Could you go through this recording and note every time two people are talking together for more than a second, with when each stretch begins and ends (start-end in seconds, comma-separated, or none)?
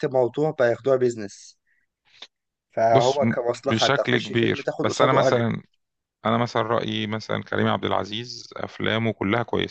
2.9-5.5